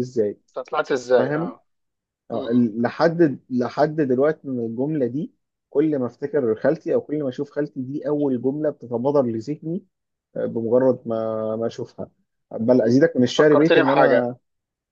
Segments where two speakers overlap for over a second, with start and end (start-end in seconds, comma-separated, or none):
12.8-14.3